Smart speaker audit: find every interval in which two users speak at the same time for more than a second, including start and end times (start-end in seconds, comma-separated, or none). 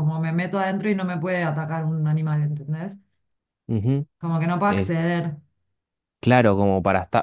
none